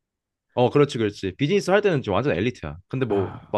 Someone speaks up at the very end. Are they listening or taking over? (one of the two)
listening